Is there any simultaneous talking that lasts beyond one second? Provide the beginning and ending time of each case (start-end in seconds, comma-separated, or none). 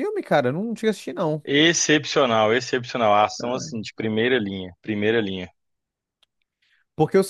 none